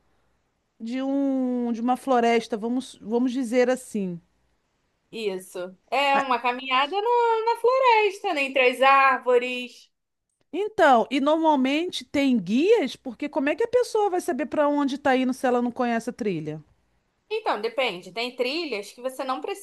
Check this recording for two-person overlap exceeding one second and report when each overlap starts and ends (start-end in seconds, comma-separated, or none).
none